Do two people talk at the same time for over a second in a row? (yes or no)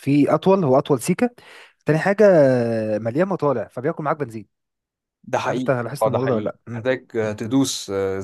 yes